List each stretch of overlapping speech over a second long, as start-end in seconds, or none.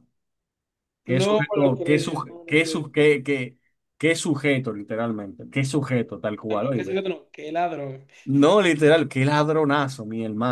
1.1-2.8